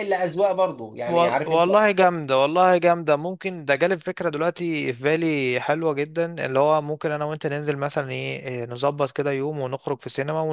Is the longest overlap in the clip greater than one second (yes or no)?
no